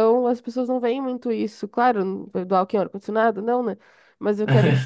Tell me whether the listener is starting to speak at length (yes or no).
no